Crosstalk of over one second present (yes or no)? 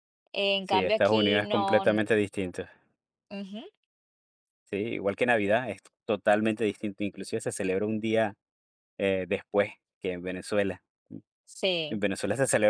yes